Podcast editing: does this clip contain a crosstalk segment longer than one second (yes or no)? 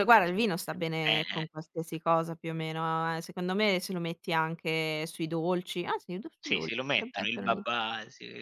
yes